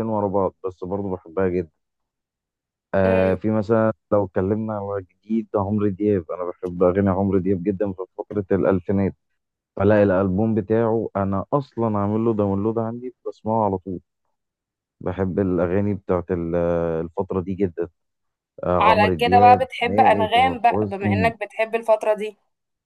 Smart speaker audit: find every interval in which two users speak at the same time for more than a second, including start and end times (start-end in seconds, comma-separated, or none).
18.8-21.3